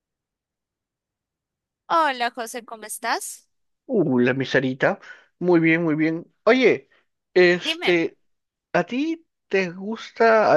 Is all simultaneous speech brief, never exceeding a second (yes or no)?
yes